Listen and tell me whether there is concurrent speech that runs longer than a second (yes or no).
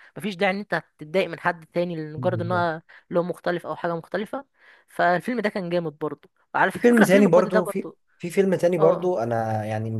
yes